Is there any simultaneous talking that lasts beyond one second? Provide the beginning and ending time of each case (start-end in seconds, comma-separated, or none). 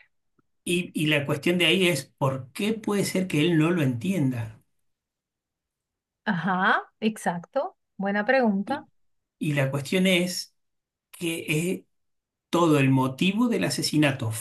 none